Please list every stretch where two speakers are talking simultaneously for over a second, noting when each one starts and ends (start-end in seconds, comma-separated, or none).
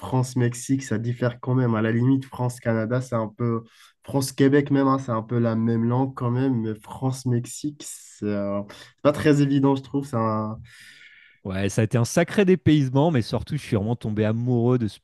none